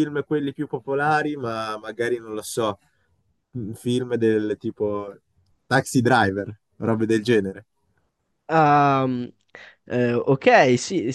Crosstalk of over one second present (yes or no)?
no